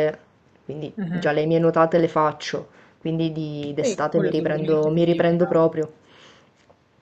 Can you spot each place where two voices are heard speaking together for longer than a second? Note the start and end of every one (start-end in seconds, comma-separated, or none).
3.8-5.5